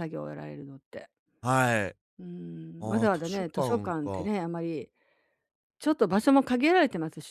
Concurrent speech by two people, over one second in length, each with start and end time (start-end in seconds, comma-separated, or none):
2.8-4.3